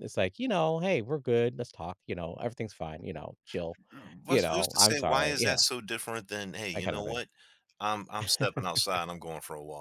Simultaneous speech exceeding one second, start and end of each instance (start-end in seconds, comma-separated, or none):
4.3-5.6